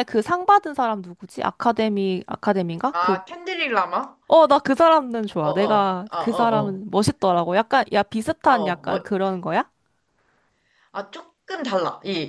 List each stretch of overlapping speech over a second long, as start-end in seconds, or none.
5.4-6.8